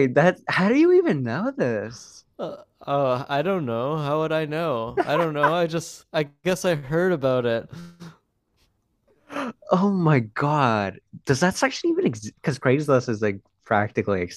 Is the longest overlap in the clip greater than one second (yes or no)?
no